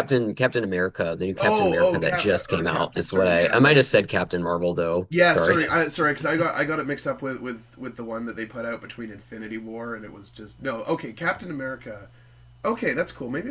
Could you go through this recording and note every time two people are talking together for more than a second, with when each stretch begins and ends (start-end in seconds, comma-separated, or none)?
1.4-3.8